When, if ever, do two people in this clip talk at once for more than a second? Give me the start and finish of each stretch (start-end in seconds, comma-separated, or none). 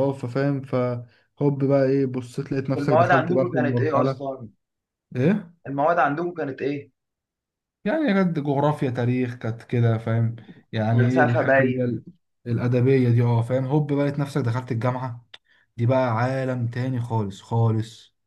2.8-4.3, 10.7-12.0